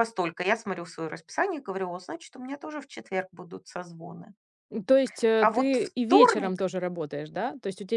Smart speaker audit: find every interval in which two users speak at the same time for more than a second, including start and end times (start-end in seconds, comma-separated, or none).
5.4-6.6